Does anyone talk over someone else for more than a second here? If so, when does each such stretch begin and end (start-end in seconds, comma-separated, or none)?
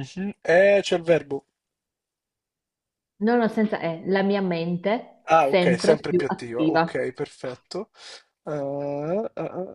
5.3-7.0